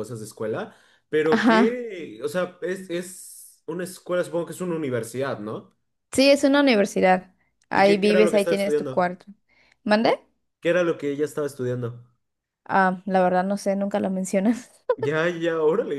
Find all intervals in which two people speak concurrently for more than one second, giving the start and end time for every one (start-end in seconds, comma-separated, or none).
7.7-9.1